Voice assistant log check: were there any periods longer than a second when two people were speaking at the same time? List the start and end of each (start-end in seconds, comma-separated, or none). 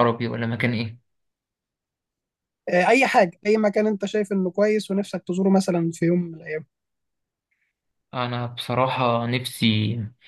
none